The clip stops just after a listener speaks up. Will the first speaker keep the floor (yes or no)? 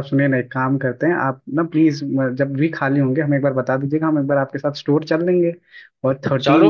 no